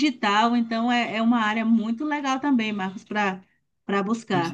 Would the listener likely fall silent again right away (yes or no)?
no